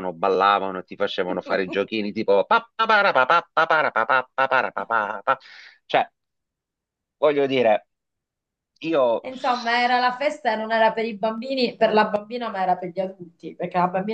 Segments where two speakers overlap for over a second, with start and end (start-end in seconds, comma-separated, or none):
none